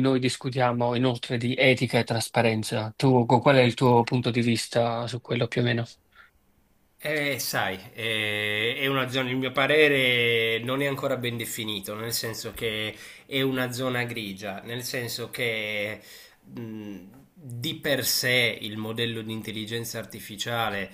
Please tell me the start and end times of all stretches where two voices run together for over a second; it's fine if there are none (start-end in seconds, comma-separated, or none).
none